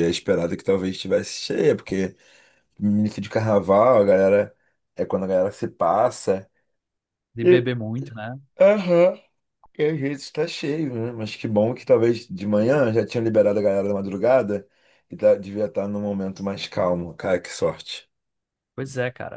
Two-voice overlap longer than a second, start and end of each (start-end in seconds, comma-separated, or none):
none